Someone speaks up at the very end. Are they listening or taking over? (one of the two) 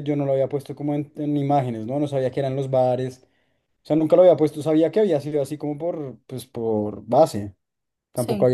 listening